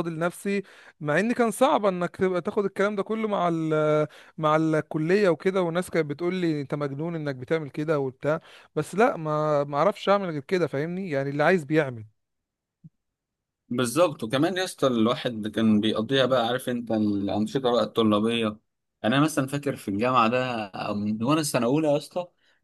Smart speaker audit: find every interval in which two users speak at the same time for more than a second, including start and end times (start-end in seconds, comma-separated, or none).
none